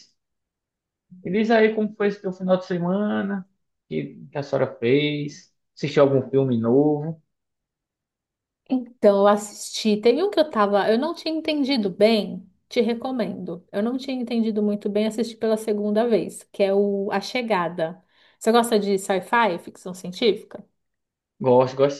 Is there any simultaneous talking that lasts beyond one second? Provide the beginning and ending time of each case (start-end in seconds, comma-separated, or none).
none